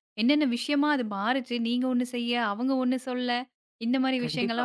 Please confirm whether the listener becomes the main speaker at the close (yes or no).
no